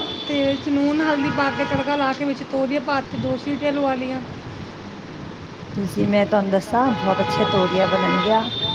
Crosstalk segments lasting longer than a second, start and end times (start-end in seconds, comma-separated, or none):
none